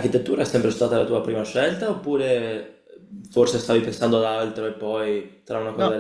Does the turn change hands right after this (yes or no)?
yes